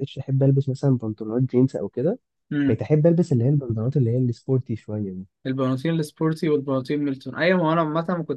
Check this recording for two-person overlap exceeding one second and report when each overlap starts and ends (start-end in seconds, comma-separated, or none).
none